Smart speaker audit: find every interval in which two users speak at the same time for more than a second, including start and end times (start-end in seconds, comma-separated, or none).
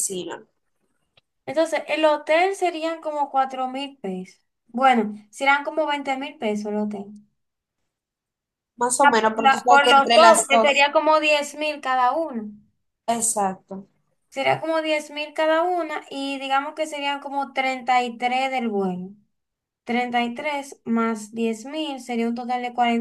9.0-10.8